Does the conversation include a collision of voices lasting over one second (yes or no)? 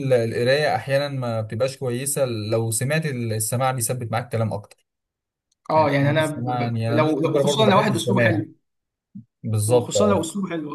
yes